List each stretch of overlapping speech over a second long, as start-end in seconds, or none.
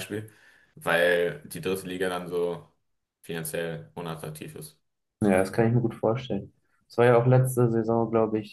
none